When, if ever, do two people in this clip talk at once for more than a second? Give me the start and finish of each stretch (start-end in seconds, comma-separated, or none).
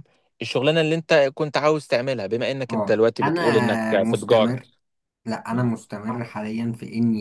2.7-4.6